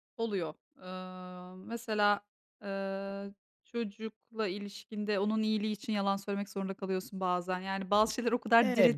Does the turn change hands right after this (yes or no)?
yes